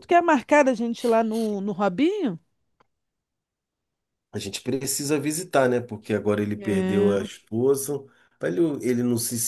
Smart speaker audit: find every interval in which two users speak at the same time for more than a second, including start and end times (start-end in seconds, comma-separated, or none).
none